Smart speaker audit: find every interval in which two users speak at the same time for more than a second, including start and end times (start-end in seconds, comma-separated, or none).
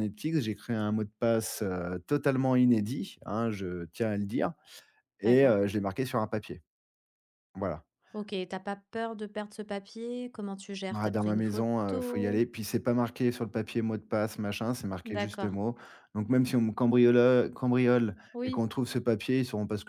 10.9-12.4